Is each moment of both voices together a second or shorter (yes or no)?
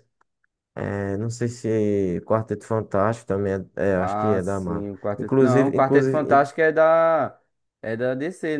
no